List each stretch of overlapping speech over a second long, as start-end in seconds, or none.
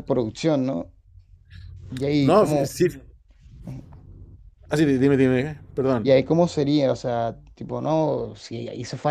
none